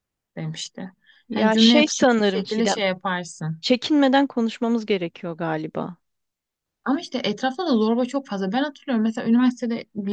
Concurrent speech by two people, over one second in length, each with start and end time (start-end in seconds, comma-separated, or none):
1.3-2.8